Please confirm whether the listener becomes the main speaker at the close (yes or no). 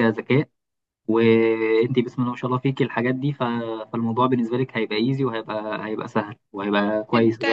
yes